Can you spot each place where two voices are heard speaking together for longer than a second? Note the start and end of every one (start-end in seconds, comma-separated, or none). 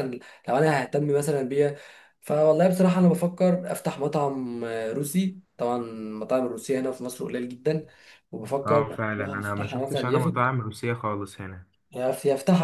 8.7-10.4